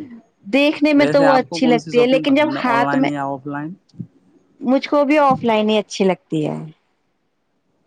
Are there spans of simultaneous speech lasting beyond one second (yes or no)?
yes